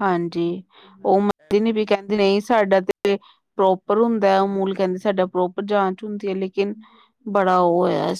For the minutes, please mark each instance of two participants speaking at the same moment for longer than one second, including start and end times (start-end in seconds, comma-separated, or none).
1.1-2.6